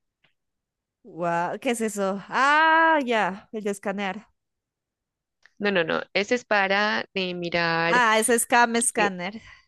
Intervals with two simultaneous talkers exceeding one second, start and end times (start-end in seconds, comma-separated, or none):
none